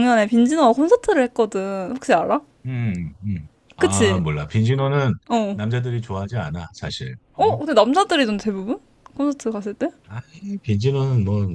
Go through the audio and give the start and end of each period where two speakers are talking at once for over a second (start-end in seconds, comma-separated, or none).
none